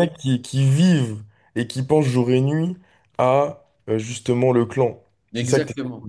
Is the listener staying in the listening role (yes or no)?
no